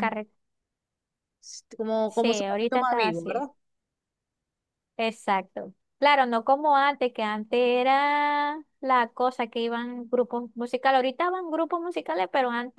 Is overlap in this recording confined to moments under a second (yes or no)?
no